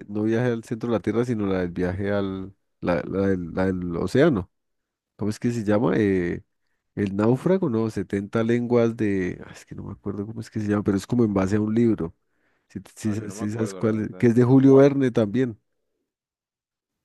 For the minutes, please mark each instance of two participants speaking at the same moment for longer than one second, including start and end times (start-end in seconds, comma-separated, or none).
13.0-14.9